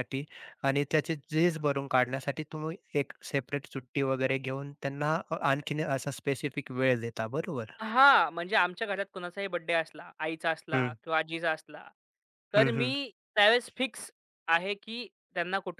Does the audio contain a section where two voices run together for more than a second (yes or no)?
no